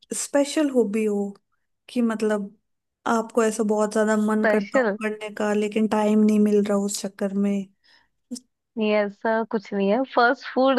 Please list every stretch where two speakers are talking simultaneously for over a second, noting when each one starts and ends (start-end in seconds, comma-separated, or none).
none